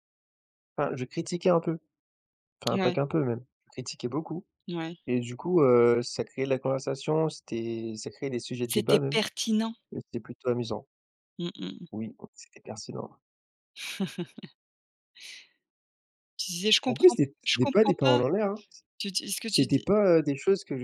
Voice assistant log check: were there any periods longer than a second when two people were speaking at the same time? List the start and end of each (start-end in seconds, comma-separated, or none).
16.9-18.2